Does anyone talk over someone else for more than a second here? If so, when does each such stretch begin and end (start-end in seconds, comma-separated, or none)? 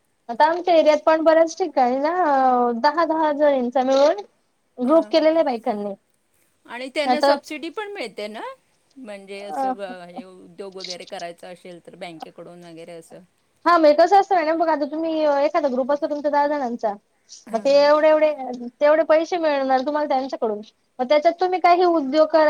none